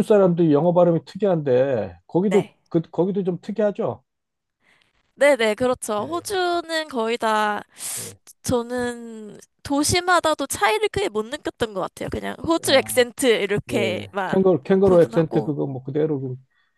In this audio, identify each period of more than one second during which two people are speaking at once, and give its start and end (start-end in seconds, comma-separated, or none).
13.7-15.5